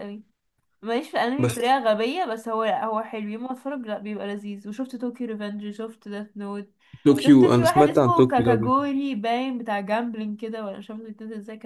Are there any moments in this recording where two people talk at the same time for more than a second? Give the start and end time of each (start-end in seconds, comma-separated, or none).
7.2-8.8